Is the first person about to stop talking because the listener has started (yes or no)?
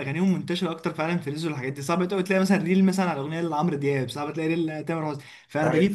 no